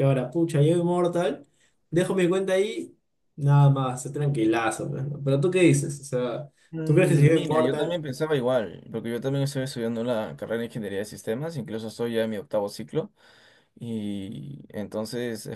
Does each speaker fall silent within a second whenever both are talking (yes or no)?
no